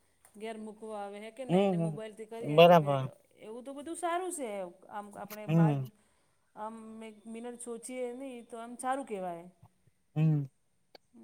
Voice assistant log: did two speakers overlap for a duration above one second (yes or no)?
yes